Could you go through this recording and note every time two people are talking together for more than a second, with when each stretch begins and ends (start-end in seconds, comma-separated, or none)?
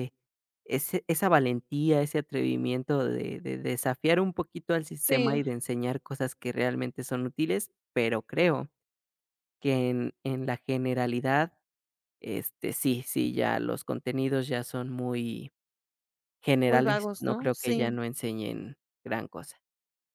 16.7-17.9